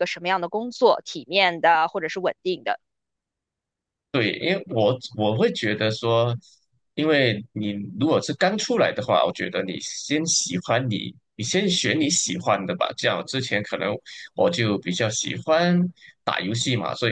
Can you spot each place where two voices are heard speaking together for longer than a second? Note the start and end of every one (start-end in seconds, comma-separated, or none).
none